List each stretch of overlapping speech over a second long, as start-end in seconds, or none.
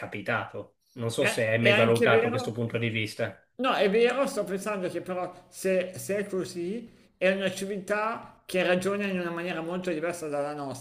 1.2-2.6